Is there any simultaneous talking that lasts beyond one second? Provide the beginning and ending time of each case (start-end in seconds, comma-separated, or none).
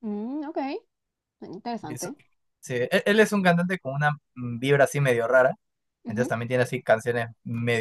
none